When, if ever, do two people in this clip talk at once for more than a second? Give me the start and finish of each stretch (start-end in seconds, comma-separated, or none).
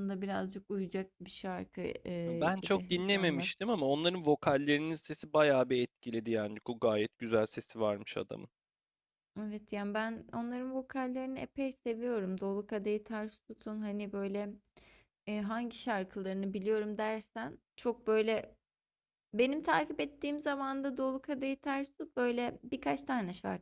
2.3-3.5